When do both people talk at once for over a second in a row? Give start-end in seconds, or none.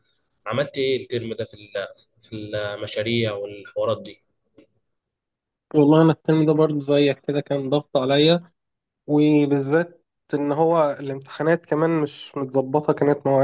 none